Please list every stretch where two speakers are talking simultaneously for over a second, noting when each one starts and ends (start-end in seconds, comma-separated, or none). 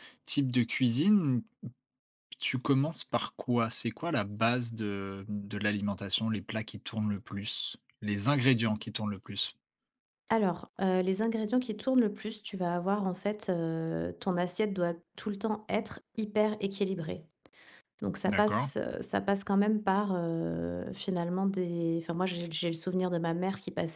none